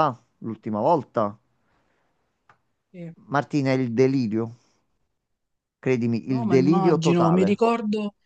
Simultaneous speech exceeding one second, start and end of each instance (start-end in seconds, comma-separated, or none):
6.3-7.6